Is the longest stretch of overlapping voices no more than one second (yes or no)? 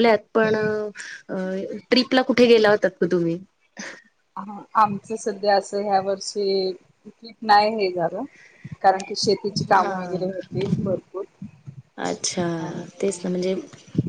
yes